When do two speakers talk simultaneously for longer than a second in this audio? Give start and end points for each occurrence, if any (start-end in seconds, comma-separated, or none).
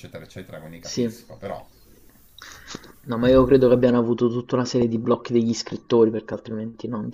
none